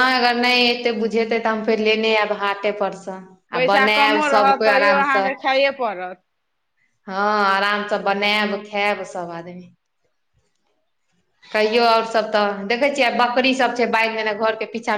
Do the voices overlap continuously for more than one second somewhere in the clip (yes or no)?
yes